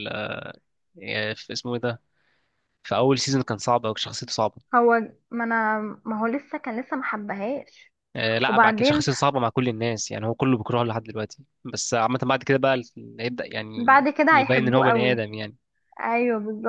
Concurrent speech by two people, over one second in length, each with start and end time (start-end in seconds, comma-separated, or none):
13.7-15.3